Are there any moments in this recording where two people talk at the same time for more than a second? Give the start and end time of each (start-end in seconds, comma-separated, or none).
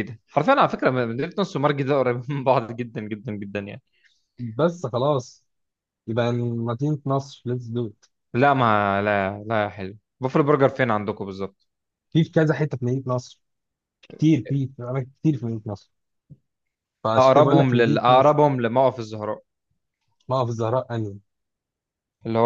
17.2-18.4